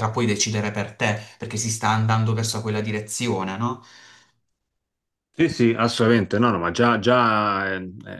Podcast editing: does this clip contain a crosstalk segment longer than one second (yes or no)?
no